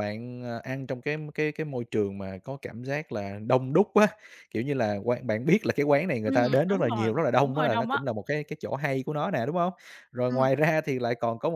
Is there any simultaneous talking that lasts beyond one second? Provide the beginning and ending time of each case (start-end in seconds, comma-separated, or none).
6.2-8.0